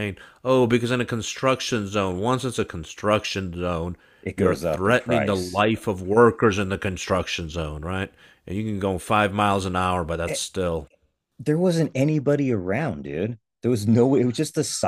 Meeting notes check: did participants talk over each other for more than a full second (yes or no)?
yes